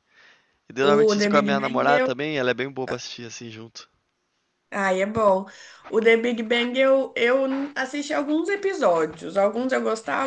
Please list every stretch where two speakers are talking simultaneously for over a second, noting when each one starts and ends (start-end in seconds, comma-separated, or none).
0.8-2.1